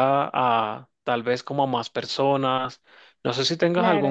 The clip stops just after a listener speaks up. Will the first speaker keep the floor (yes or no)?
no